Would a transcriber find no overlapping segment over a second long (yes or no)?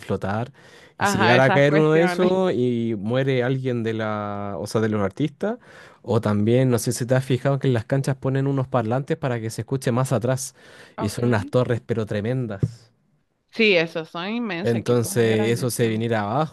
no